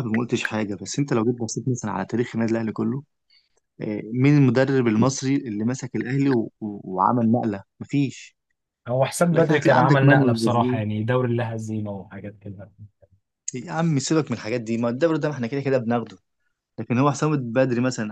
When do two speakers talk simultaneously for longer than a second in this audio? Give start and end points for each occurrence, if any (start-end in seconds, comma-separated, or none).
9.3-10.8